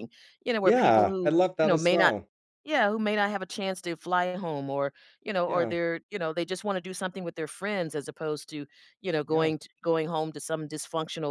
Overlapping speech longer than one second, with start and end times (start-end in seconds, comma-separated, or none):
0.6-2.1